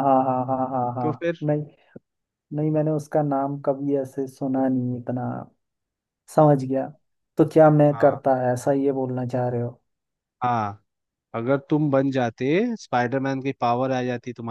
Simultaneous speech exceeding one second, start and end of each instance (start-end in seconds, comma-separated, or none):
none